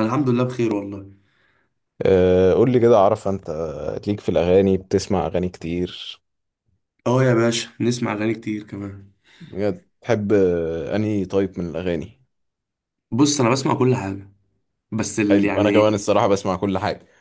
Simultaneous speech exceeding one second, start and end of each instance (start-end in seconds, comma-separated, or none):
none